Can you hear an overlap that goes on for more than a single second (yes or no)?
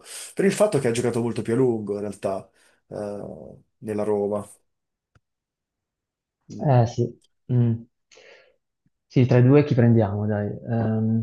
no